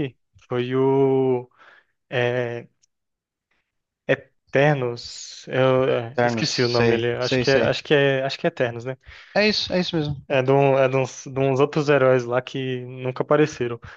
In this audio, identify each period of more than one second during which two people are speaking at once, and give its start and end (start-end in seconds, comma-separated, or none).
6.1-7.7